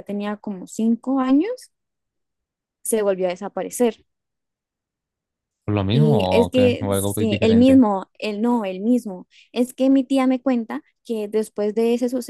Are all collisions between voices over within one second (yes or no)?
no